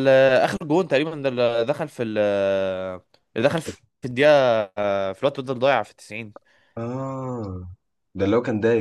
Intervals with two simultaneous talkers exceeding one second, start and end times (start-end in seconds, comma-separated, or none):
none